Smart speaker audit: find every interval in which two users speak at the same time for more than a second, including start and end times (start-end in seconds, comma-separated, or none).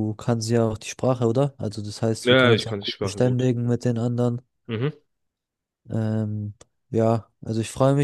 2.2-3.5